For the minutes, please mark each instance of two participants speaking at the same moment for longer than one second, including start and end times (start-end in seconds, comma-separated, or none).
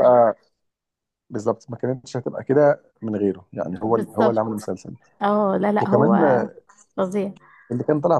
none